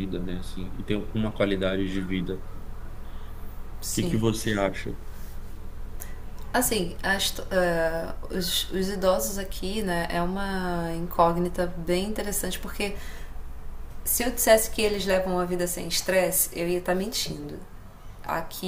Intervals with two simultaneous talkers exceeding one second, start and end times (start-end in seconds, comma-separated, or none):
none